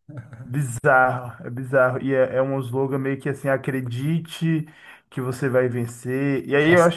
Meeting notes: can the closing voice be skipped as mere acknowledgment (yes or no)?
yes